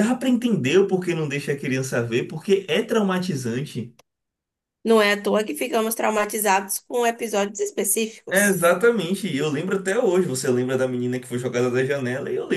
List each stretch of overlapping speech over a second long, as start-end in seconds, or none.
none